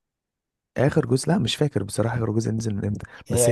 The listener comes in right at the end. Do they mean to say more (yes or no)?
no